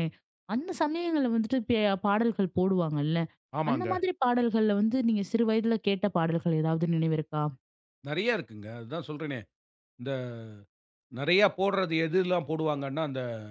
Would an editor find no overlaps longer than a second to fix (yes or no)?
yes